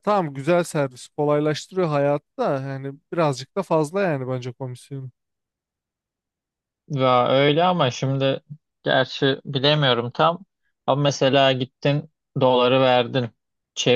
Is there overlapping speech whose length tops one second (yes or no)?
no